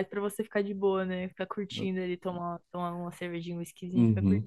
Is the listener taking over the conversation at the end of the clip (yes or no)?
yes